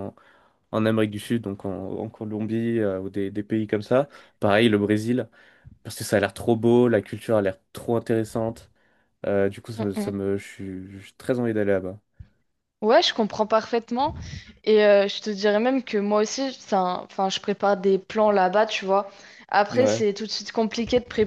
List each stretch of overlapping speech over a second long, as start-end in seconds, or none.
none